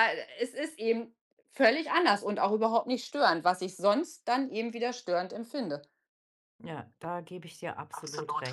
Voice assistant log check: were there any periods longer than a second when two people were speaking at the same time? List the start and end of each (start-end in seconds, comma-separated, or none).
none